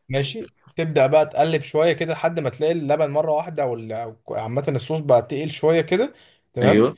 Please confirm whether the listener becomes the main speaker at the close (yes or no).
no